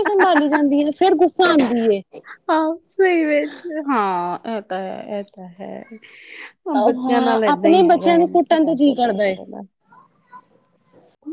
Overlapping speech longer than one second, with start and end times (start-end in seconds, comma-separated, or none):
7.0-9.3